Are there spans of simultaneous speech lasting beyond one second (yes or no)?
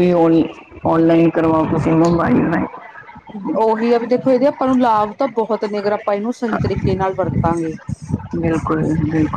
no